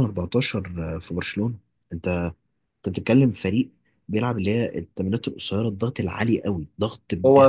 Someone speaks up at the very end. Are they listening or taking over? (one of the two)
taking over